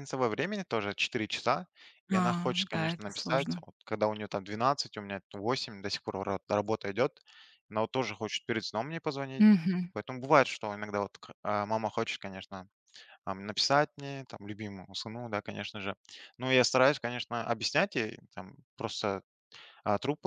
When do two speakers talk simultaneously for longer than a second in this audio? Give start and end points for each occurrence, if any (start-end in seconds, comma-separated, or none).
2.1-3.6